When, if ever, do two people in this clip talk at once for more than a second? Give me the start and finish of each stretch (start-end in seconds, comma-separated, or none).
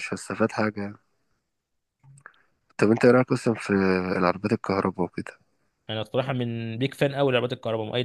none